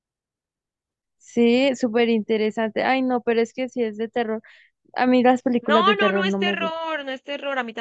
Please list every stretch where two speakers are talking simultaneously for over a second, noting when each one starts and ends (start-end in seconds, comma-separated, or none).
5.6-6.8